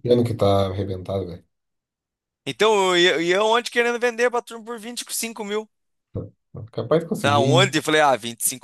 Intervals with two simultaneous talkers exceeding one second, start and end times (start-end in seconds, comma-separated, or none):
none